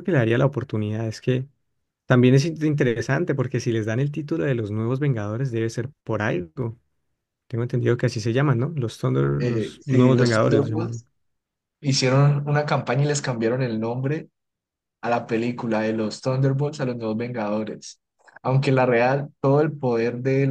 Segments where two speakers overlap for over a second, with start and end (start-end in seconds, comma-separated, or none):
9.4-11.0